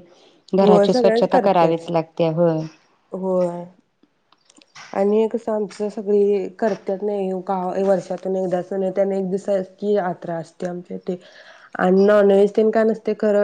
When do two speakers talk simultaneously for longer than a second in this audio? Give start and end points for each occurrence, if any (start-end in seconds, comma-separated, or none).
0.6-1.8